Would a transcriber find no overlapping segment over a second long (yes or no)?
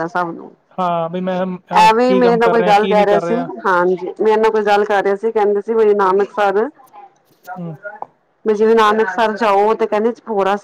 no